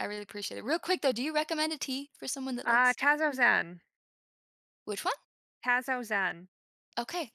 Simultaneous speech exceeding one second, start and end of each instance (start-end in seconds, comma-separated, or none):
none